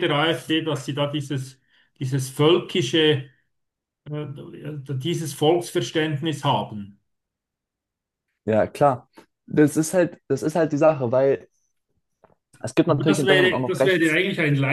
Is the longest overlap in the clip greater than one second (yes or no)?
yes